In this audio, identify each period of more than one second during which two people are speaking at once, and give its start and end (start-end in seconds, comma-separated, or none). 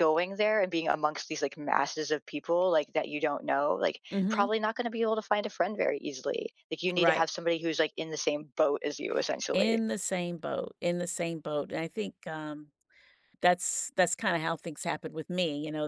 none